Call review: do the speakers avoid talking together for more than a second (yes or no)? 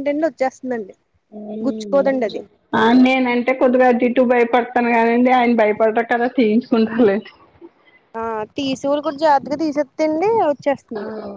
yes